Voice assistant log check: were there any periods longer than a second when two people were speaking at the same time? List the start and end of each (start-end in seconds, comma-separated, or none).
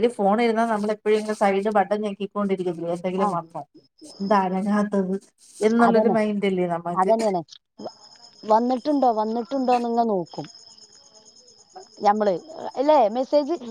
none